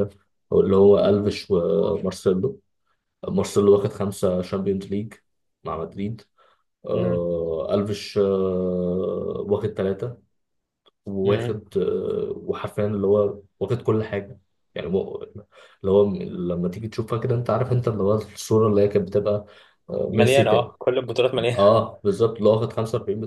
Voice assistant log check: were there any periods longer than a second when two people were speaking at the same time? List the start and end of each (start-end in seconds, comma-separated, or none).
none